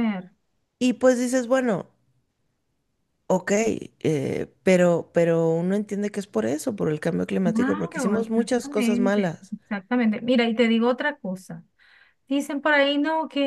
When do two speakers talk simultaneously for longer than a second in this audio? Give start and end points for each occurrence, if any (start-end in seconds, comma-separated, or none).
7.4-9.5